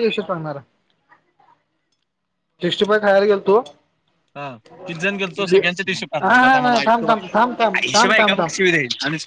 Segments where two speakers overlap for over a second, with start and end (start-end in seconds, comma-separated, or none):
6.2-8.4